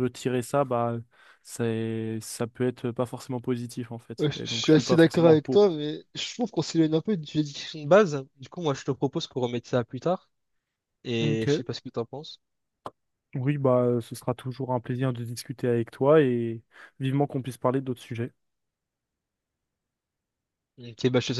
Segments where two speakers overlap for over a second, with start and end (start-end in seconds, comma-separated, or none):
4.2-5.7